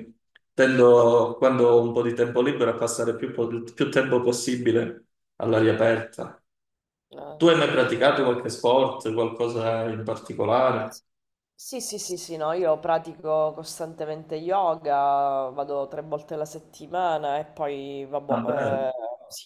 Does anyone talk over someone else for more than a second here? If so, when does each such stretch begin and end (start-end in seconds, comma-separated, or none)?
none